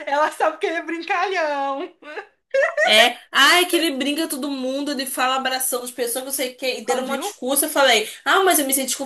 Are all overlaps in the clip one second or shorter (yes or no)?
yes